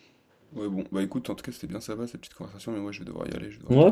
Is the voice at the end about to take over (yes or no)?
yes